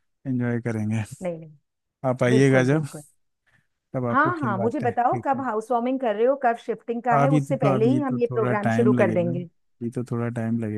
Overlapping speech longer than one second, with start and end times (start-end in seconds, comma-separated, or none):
4.1-5.4, 7.1-9.5